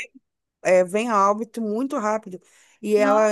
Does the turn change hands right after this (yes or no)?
no